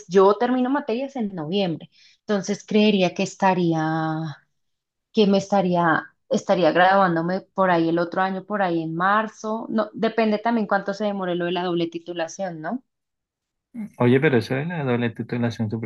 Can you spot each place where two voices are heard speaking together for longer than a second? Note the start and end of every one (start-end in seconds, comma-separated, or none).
none